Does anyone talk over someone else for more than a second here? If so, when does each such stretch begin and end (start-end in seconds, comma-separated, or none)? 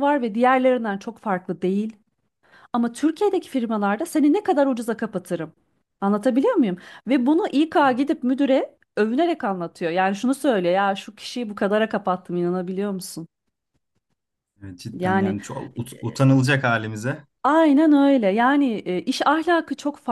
none